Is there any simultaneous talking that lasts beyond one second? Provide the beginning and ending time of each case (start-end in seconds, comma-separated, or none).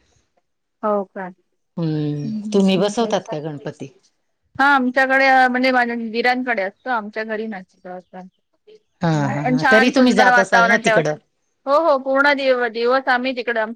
9.0-11.1